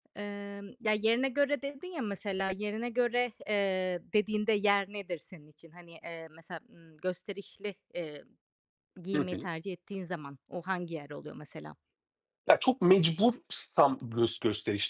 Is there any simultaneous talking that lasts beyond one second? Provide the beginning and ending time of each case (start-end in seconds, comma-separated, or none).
none